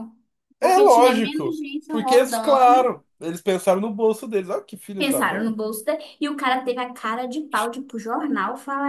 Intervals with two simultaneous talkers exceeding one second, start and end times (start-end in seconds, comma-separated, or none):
0.6-2.9